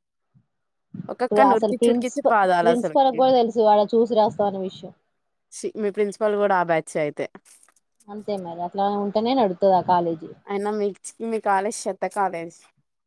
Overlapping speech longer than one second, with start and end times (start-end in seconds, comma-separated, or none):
1.2-3.2